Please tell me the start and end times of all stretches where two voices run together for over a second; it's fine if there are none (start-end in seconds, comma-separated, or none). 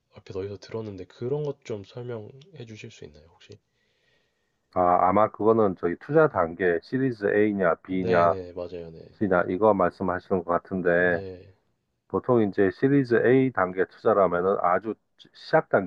none